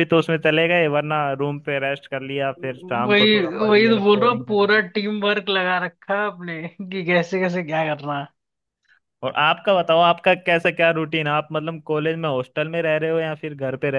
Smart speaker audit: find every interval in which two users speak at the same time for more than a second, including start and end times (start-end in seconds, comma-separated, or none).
3.0-4.8